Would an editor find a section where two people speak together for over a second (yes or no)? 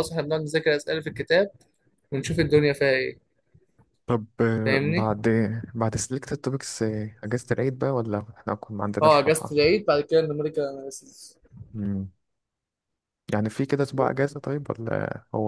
no